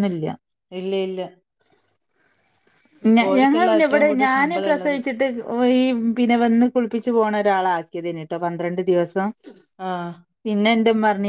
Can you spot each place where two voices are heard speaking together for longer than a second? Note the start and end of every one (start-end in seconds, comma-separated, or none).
3.2-5.0